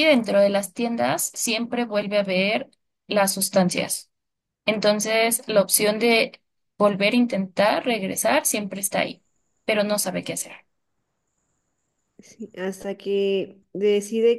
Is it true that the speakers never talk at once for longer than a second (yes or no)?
yes